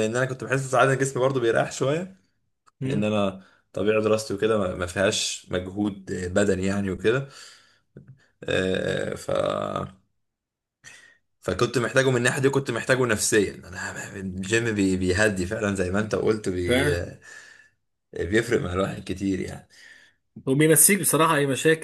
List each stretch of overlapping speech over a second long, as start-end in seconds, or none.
none